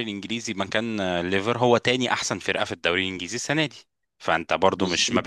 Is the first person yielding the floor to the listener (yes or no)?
no